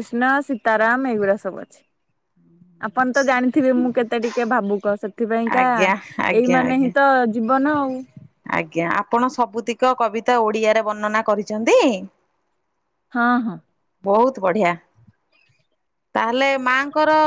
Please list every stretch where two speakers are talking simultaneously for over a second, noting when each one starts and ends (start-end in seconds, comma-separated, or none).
none